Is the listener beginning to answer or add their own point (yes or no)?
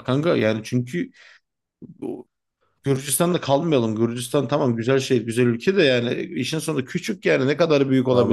yes